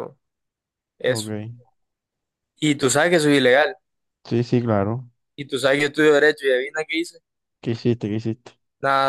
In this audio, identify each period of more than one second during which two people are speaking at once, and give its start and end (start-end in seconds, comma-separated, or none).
none